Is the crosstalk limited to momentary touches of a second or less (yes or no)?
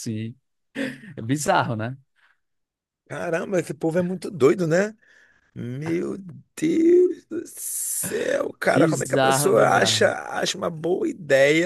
no